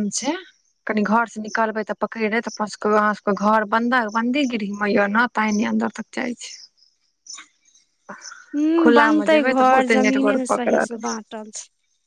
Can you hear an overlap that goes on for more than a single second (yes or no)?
yes